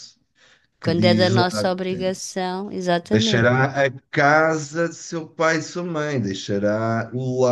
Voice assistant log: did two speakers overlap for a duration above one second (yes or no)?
yes